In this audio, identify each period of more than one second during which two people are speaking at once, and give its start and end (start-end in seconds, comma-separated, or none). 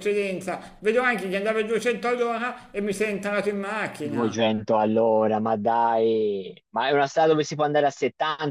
none